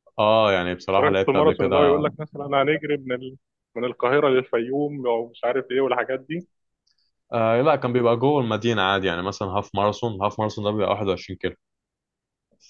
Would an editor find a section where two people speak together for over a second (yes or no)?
yes